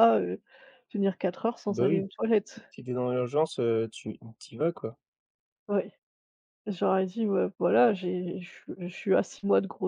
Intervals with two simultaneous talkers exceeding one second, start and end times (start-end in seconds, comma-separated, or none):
none